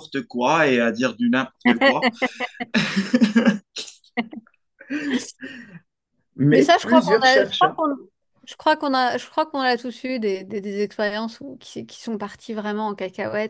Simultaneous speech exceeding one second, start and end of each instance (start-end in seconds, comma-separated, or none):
6.5-7.8